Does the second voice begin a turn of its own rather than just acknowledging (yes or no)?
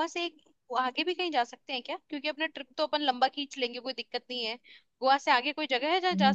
yes